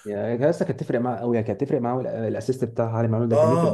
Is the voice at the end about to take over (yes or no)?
yes